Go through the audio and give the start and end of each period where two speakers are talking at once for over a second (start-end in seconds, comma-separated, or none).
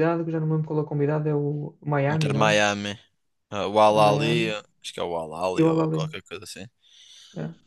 none